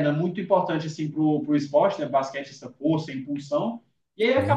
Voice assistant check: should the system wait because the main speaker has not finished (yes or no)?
yes